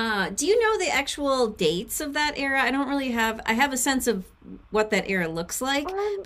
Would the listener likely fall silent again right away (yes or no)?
yes